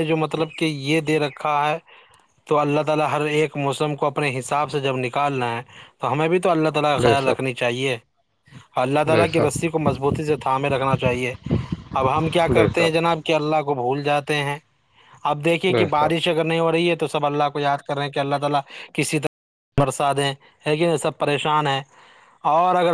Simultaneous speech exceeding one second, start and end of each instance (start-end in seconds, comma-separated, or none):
none